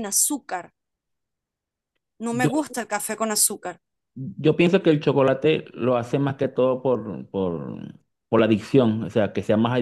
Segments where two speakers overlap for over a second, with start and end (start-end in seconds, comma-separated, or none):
none